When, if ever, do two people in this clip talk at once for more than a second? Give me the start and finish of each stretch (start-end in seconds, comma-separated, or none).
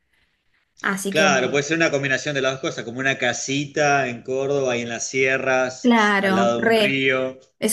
5.8-7.0